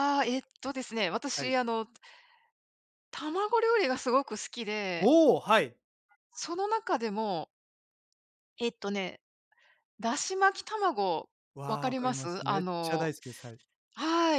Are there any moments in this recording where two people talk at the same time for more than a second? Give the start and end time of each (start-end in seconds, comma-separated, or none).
11.7-13.1